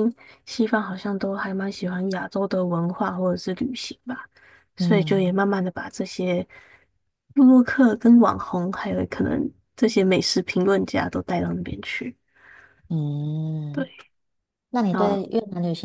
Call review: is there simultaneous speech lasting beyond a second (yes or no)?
no